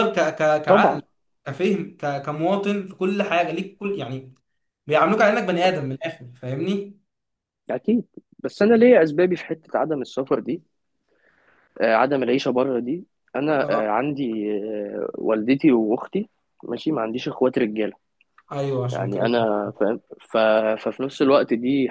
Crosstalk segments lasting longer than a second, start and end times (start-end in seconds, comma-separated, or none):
none